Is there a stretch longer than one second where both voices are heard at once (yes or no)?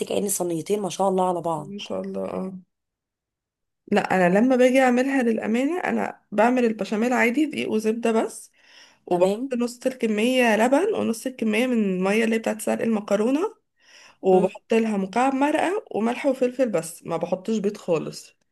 no